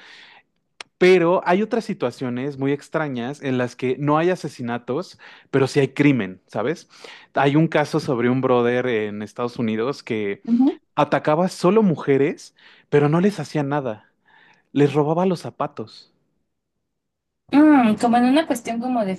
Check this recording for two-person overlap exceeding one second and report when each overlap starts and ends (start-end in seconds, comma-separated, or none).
none